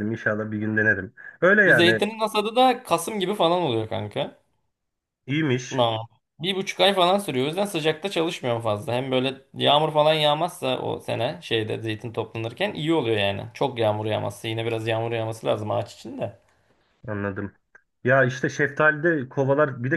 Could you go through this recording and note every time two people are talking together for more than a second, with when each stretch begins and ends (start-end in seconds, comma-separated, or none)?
none